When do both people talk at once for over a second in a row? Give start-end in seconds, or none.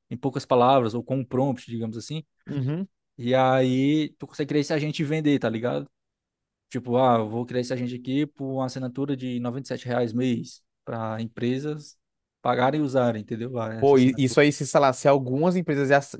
none